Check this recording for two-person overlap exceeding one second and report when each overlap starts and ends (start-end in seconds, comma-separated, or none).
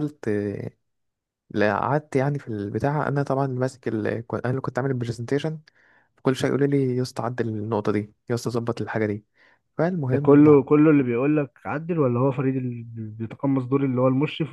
none